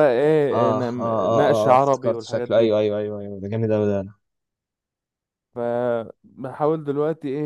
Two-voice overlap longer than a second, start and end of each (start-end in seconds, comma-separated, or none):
0.5-2.7